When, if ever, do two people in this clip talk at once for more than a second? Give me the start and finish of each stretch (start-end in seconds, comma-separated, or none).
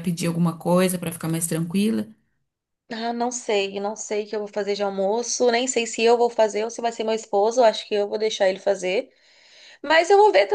none